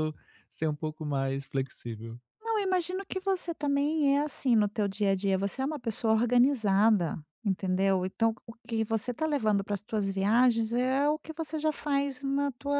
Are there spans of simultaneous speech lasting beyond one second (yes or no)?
no